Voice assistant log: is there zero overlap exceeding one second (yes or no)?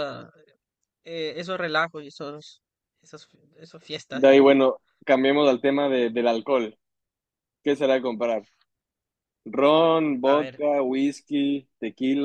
yes